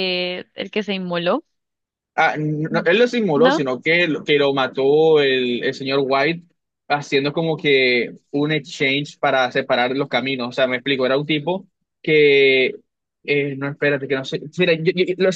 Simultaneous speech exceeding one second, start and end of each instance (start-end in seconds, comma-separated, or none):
none